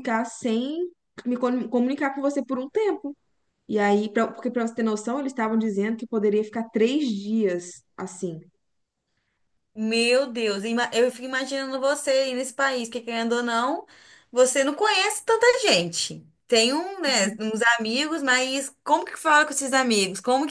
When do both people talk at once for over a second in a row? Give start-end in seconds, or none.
none